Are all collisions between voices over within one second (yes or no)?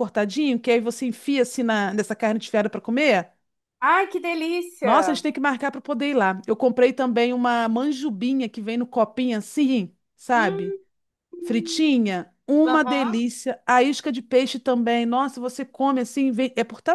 yes